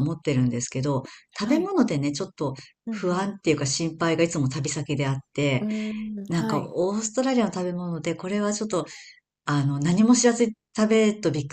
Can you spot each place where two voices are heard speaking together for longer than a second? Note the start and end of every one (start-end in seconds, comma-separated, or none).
none